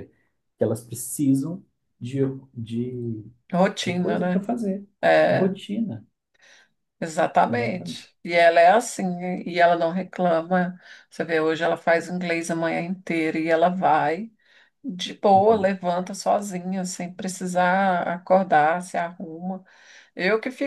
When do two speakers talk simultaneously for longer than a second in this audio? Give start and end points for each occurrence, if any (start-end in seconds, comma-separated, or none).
none